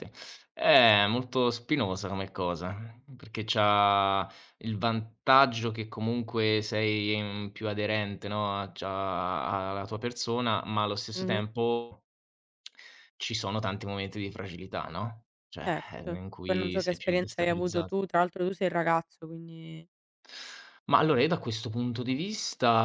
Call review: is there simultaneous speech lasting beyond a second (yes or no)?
yes